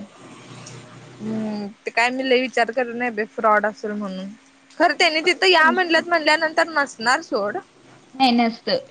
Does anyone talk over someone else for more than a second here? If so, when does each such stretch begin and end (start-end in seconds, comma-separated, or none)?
5.0-6.3